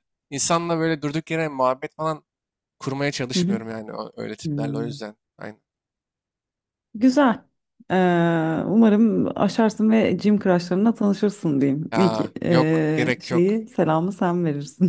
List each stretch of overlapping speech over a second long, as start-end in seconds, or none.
11.9-13.6